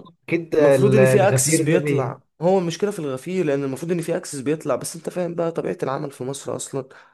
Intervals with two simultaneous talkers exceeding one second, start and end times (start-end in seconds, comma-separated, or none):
0.6-2.2